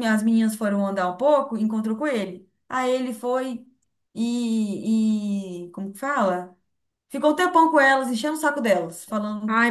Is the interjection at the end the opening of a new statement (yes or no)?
yes